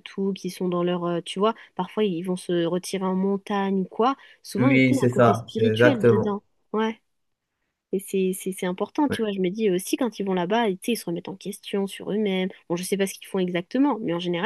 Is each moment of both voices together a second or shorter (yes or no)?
no